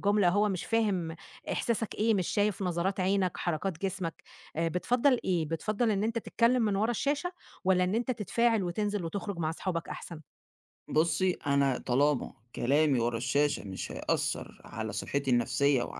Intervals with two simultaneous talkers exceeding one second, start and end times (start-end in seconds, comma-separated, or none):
none